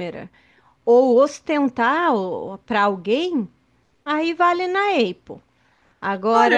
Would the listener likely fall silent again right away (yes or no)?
no